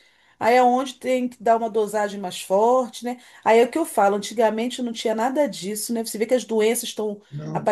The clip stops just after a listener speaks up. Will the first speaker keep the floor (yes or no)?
yes